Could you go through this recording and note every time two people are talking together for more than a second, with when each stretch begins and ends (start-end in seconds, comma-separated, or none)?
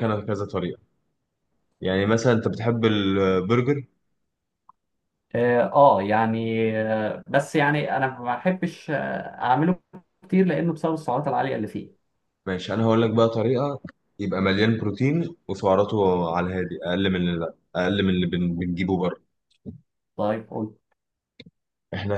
none